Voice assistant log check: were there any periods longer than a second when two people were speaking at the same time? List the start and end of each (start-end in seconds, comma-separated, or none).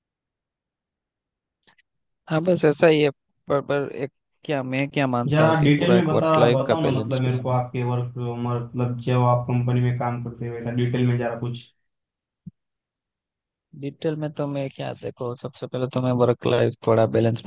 5.3-7.6